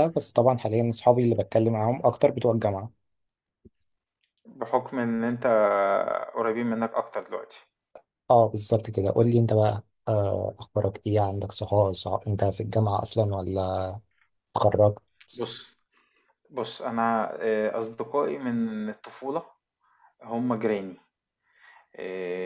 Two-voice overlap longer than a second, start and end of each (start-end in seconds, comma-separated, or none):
none